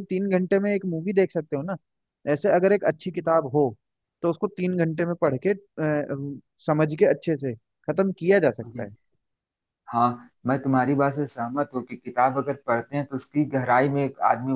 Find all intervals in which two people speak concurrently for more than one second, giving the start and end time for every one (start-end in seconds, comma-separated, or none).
none